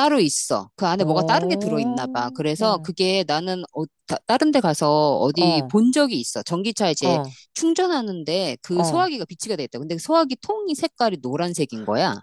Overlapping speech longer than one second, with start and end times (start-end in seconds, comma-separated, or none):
1.0-2.9